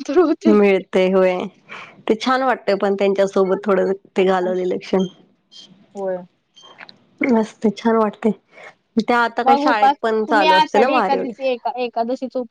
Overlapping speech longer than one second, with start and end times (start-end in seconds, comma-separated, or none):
9.4-11.5